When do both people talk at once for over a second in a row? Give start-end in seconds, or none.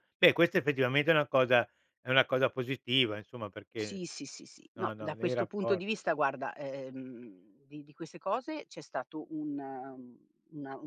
4.8-6.0